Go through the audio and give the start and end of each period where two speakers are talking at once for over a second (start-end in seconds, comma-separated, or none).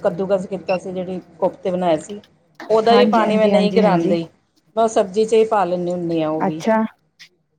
2.9-4.2